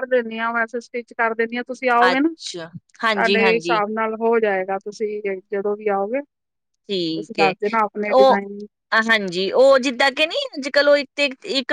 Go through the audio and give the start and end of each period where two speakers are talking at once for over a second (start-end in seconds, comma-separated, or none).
2.1-3.8